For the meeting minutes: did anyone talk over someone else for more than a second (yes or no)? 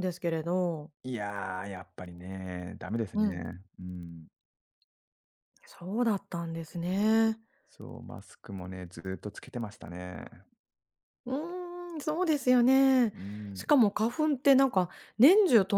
no